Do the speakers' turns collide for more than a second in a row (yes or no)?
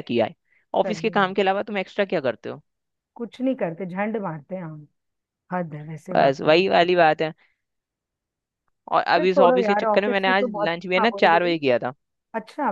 yes